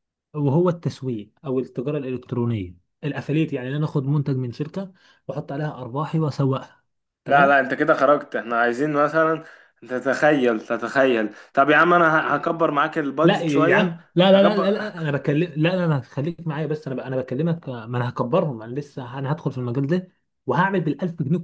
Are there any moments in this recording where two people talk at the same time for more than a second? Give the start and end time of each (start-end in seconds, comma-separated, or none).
13.2-15.0